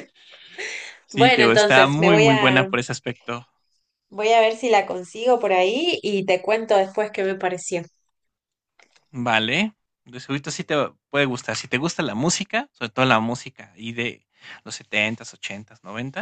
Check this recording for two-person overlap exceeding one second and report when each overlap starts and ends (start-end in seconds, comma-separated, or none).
1.1-2.7